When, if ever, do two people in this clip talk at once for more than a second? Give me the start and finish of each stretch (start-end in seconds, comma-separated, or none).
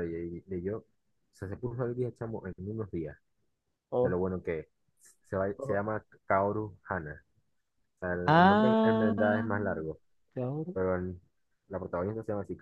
8.3-9.5